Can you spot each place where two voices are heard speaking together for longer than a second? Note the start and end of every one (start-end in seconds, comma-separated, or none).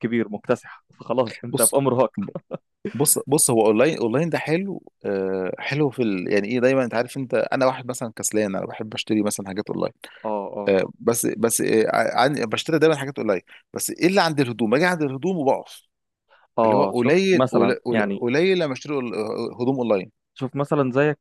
16.6-18.2